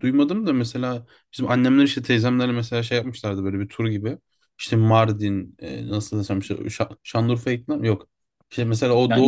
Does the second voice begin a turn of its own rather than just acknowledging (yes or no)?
no